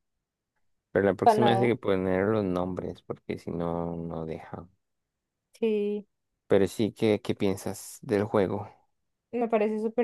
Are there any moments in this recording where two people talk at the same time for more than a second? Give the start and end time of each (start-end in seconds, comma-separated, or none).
none